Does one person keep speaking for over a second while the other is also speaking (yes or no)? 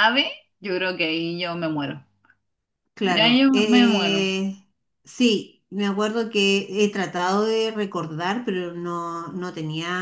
yes